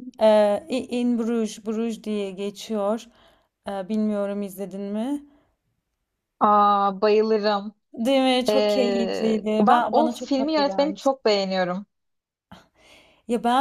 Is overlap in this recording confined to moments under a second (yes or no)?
no